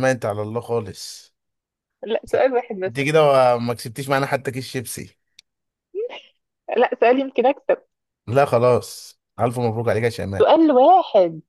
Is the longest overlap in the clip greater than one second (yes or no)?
no